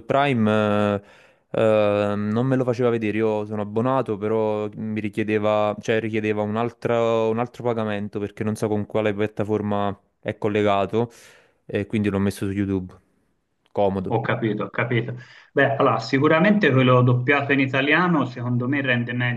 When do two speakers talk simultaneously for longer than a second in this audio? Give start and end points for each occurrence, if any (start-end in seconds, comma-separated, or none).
none